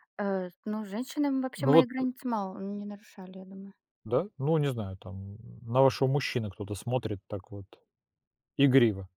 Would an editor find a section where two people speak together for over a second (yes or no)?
no